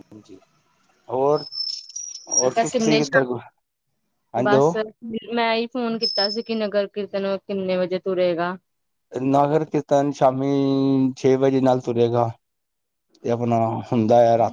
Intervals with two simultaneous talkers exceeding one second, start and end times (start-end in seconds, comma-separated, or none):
none